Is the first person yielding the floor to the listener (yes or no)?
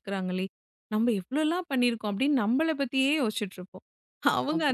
no